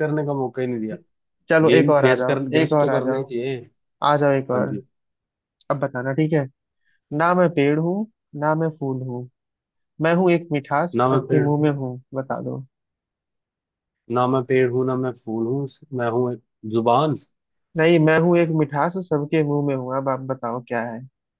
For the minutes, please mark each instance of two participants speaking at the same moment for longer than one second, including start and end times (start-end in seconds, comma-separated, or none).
1.6-3.3